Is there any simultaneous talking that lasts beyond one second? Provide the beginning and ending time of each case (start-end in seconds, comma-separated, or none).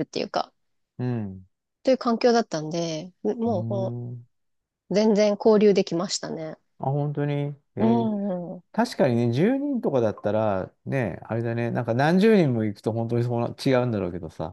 none